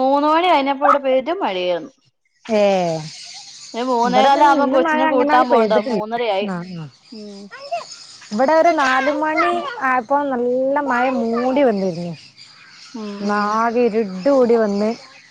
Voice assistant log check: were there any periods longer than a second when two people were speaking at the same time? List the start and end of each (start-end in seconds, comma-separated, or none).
4.1-6.0